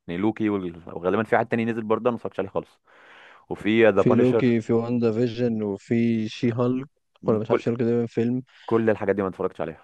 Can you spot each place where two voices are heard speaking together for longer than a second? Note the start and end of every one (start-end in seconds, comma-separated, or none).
none